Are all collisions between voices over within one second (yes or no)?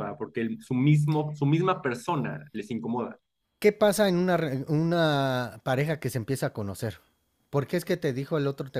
yes